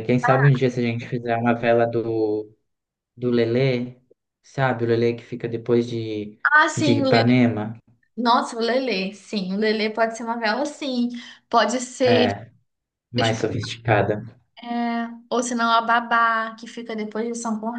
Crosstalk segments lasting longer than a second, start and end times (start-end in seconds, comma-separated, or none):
none